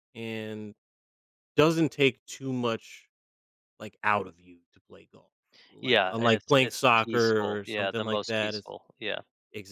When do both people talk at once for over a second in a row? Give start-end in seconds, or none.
5.8-8.7